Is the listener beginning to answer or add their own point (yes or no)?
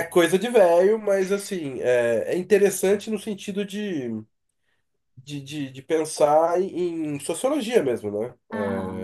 no